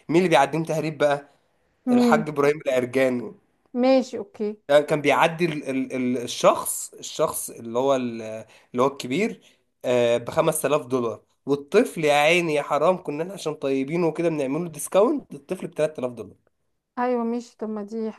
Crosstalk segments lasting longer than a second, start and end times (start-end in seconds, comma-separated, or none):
none